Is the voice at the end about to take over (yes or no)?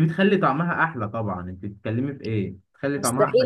yes